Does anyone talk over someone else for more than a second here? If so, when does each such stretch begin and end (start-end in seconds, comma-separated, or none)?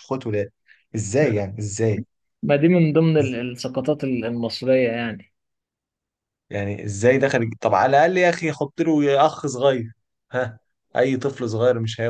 none